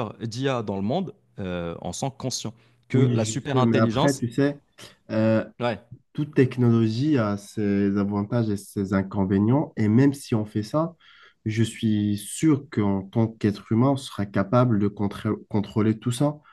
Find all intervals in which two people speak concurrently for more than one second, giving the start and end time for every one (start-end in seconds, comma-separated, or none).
2.9-4.2